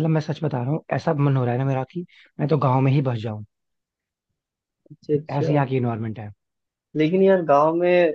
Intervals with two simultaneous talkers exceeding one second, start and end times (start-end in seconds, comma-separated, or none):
none